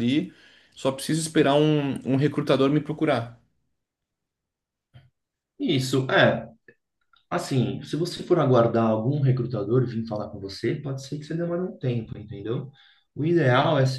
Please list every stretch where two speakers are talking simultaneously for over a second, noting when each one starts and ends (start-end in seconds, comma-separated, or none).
none